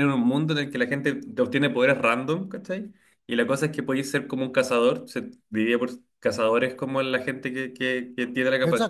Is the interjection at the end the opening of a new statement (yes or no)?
yes